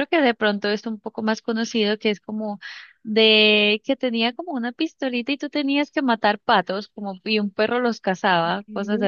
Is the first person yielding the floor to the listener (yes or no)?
no